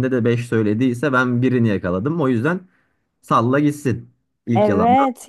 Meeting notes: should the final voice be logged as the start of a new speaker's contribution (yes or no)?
yes